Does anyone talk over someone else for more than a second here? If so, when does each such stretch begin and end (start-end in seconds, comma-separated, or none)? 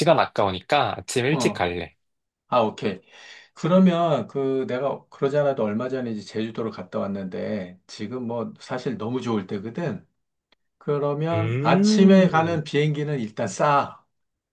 11.3-12.6